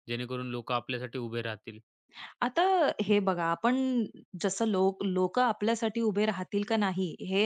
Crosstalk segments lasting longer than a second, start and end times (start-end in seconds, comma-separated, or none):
none